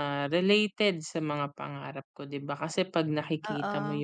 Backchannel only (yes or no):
yes